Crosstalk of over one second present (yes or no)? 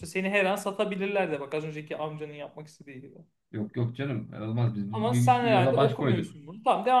yes